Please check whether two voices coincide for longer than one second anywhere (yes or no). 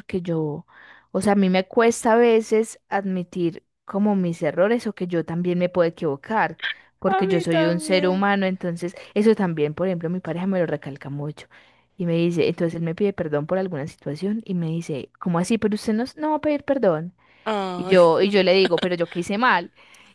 yes